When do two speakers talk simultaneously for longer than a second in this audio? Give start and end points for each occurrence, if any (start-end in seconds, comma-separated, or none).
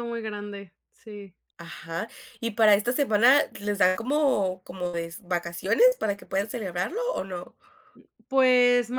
none